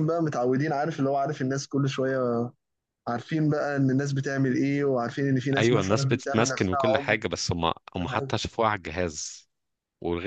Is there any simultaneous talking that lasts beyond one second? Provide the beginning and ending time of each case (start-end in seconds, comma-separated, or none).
5.6-7.2